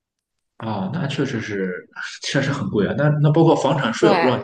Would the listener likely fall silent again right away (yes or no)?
yes